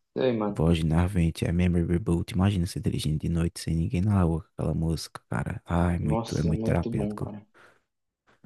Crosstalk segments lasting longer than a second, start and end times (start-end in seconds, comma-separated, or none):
6.0-7.3